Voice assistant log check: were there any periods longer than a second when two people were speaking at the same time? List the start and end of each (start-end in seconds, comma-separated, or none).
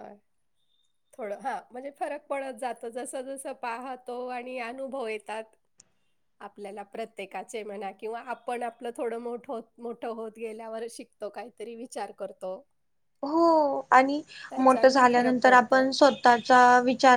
14.6-15.8